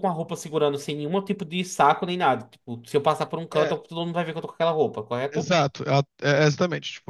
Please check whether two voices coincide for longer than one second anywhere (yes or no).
no